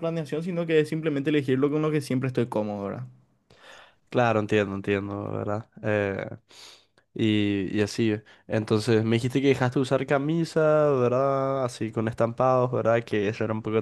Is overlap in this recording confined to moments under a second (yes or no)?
yes